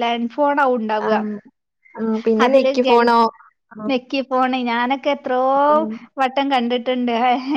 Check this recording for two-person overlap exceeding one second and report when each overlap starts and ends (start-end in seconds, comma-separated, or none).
none